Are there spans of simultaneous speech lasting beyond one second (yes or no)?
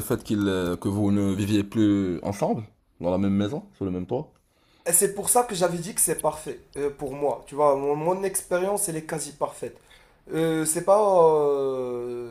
no